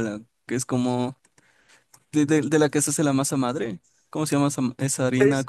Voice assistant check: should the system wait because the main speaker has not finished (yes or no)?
no